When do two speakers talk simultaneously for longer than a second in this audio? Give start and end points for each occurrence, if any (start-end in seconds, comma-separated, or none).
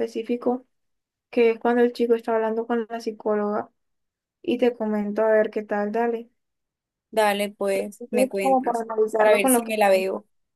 8.0-9.7